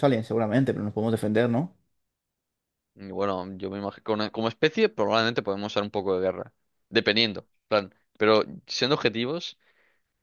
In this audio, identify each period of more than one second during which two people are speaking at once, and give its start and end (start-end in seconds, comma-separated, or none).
none